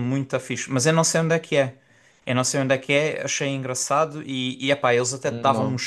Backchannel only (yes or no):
yes